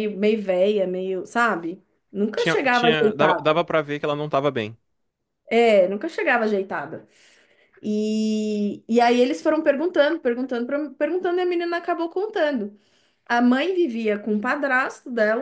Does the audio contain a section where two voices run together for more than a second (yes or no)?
yes